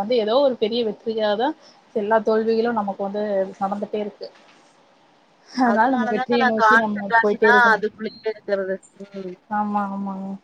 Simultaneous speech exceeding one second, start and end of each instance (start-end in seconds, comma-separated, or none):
5.7-7.8